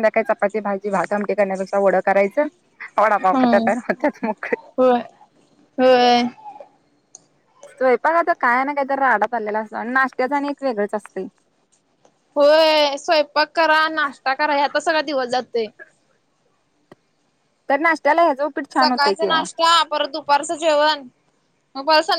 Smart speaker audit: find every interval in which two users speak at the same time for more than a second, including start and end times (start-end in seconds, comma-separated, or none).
none